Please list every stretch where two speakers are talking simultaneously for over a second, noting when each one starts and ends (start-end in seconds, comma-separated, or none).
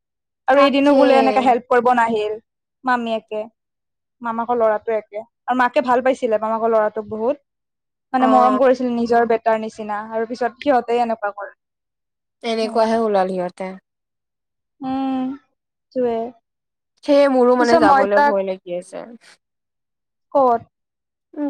none